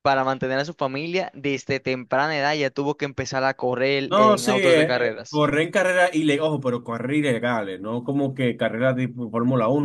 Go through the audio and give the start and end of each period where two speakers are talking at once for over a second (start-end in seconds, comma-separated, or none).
4.1-5.5